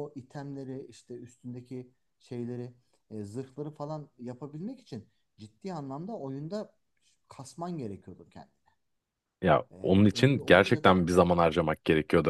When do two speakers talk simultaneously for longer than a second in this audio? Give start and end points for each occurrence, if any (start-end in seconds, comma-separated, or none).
9.7-11.1